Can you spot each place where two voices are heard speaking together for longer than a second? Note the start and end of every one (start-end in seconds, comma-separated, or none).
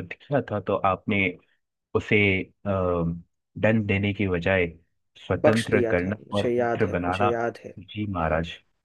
5.4-7.3